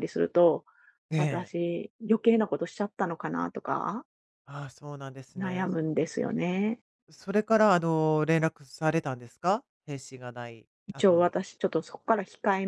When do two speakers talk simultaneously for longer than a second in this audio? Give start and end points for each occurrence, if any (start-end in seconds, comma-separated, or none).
none